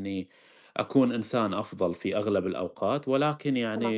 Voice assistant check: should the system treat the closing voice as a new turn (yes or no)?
no